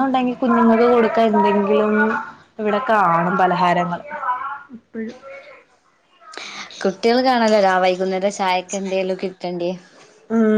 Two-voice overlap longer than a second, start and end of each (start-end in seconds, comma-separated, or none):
none